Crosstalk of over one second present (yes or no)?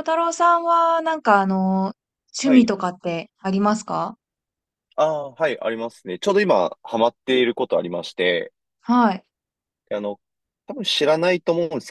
no